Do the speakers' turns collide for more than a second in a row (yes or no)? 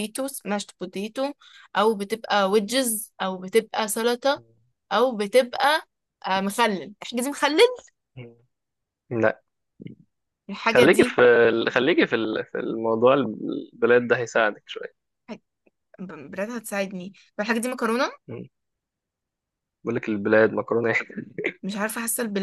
no